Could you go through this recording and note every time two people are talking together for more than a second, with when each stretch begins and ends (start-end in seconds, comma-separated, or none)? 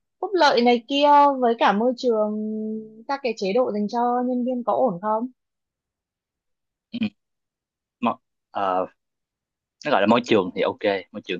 none